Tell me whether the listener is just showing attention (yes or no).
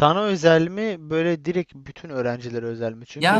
no